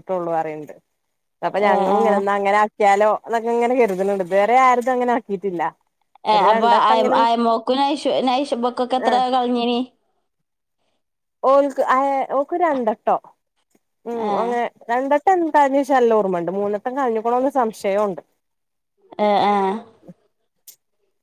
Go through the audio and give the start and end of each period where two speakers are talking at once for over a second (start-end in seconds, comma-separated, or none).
none